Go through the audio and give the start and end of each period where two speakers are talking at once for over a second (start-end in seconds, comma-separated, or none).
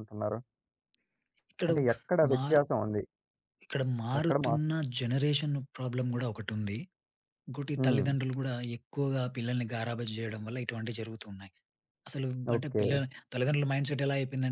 none